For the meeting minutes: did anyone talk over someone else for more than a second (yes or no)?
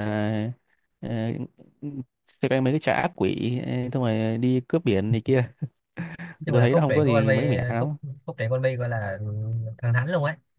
yes